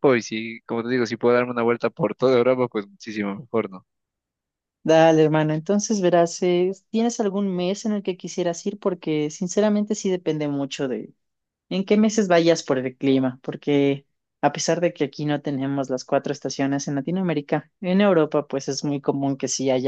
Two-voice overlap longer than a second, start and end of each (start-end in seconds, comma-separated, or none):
none